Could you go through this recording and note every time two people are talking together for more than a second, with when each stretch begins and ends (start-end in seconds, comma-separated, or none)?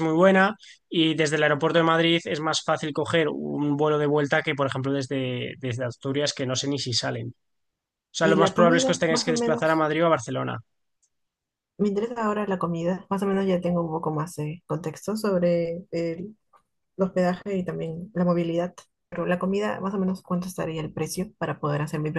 8.2-9.9